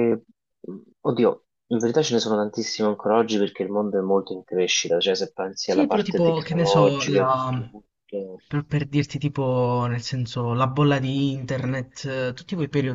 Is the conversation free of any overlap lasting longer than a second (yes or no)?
no